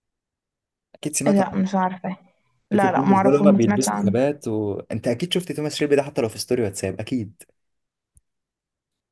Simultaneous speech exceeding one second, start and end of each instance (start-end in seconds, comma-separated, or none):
2.7-4.2